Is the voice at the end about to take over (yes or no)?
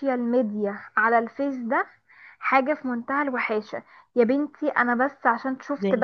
no